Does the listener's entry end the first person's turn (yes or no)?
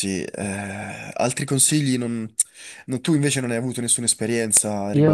yes